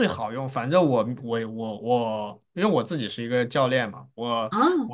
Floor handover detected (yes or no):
no